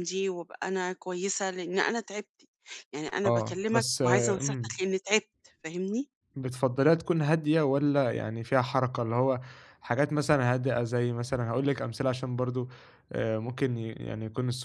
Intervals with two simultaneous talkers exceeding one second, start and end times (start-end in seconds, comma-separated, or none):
3.2-4.7